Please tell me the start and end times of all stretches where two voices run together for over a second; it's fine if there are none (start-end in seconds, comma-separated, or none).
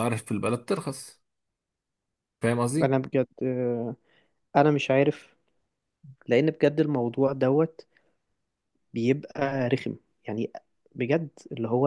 none